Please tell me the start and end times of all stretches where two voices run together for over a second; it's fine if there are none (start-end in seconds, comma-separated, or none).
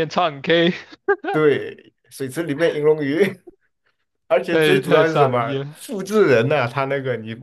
4.5-5.8